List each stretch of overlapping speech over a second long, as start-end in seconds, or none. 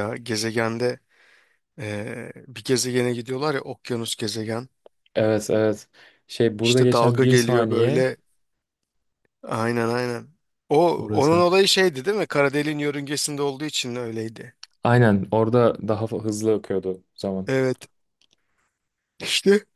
6.6-8.1